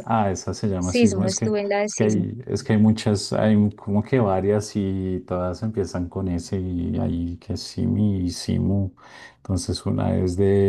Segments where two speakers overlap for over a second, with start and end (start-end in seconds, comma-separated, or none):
0.8-2.3